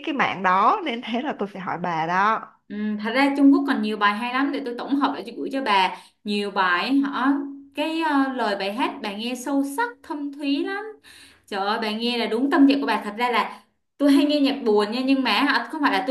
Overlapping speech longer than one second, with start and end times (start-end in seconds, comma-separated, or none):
none